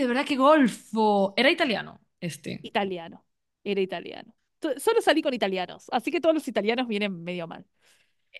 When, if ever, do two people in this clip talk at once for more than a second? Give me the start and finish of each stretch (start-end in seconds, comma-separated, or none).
none